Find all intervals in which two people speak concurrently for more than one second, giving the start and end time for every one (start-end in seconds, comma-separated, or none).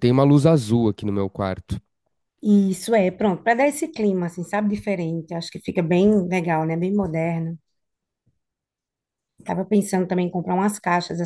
none